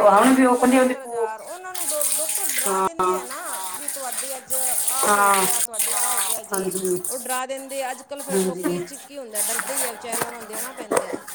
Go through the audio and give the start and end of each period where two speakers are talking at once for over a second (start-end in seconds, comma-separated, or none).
none